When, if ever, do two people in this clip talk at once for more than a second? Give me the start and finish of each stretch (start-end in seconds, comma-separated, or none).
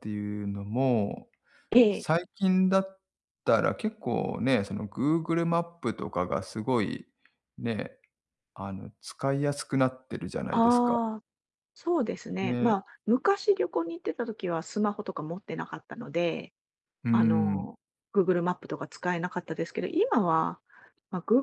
none